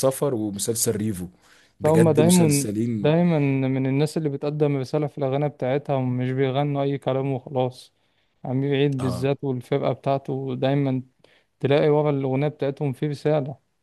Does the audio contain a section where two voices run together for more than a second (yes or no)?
yes